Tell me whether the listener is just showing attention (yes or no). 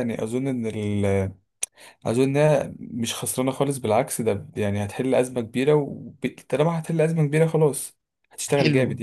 no